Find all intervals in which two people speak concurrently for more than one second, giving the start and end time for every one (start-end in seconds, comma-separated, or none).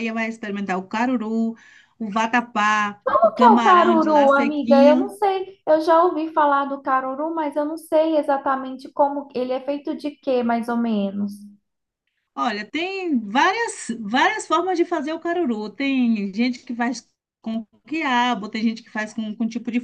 3.1-5.2